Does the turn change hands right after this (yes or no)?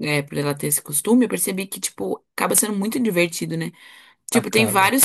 no